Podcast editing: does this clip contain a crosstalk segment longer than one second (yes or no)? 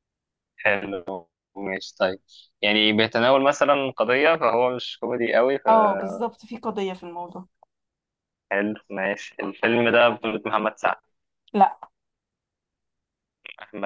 no